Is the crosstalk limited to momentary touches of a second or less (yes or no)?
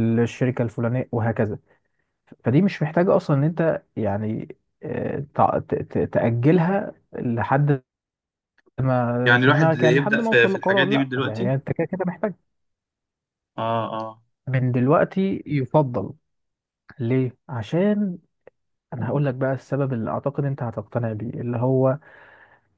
no